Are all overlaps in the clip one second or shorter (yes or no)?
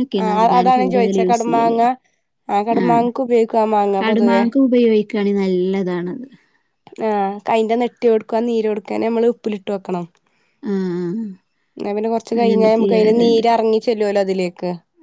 yes